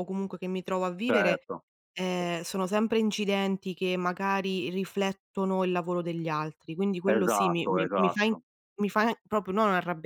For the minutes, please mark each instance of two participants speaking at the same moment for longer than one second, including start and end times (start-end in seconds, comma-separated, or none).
7.1-8.3